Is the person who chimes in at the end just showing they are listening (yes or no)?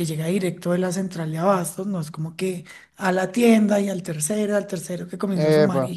yes